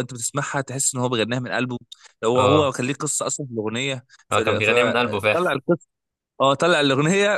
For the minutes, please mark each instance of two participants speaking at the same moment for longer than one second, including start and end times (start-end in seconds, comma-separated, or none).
4.3-5.6